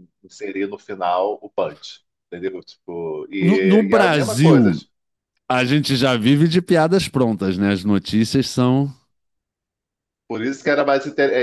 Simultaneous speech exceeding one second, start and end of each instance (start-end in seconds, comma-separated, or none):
3.4-4.8